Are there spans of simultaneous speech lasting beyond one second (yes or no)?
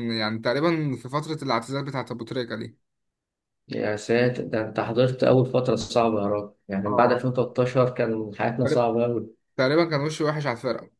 no